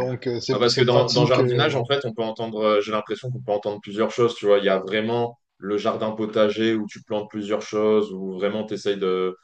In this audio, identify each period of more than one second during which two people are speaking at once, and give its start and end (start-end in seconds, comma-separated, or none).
0.5-1.8